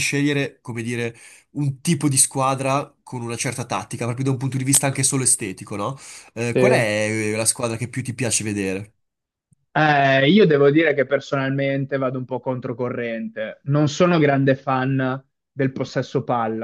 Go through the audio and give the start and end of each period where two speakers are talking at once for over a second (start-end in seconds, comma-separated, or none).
none